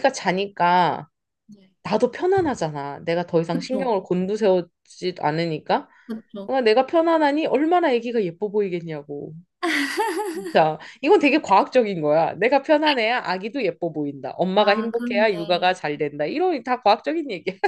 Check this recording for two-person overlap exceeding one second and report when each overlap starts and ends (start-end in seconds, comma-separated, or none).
14.5-15.7